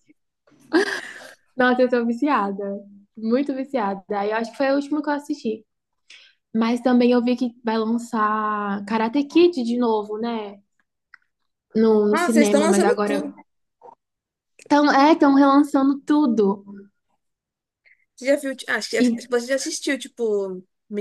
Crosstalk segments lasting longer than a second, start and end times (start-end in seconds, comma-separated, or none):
12.1-13.3